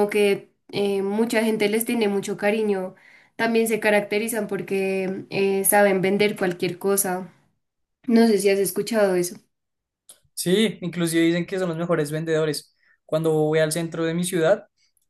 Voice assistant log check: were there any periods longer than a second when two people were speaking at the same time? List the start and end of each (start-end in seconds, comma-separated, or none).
none